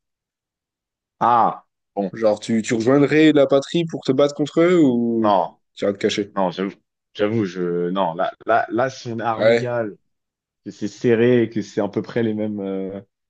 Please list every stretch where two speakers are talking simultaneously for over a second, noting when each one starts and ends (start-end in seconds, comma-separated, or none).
none